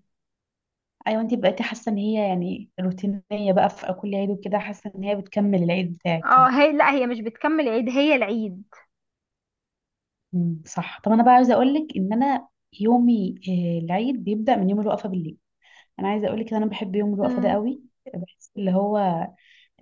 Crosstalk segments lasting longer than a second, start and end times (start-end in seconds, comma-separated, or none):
none